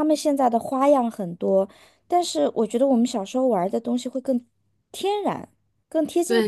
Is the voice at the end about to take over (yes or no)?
yes